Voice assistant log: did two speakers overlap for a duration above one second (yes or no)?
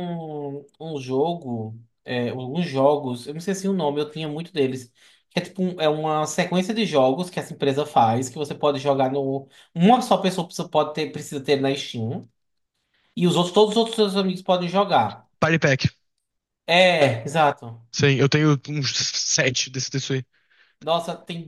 no